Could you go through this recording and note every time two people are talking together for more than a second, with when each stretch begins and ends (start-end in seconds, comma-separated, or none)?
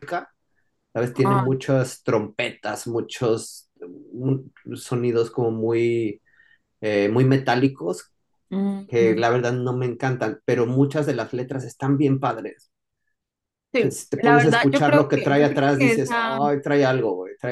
13.8-16.4